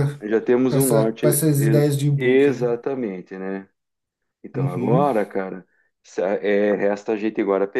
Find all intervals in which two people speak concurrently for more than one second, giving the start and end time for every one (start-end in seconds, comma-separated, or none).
0.7-2.7